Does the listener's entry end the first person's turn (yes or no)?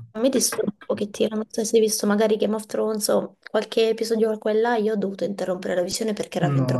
yes